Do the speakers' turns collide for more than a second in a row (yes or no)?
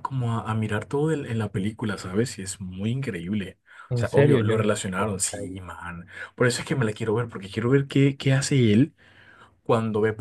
yes